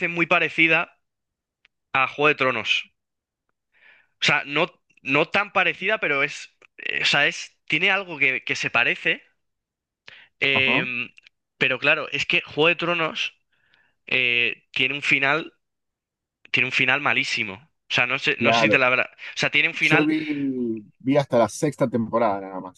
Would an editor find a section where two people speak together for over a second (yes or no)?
no